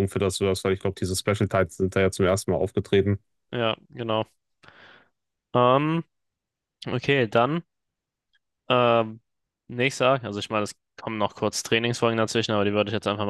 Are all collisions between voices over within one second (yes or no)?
yes